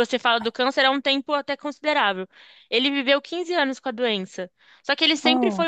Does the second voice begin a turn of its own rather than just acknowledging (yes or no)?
no